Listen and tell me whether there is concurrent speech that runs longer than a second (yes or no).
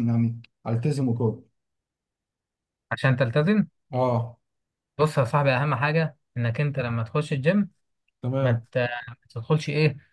no